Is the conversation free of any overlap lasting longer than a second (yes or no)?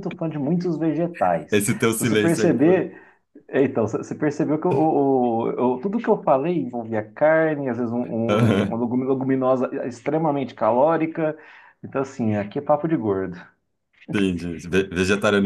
no